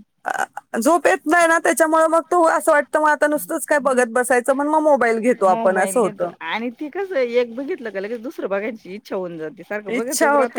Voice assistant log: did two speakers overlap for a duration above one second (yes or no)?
no